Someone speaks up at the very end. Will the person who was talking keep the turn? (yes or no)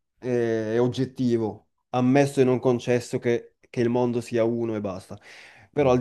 yes